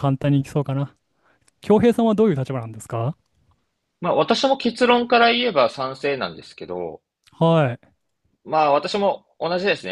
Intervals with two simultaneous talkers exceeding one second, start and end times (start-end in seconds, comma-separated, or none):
none